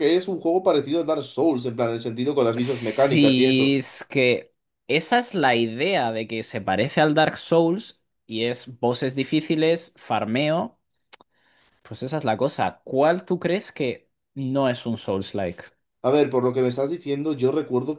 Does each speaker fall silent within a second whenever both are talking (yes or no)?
no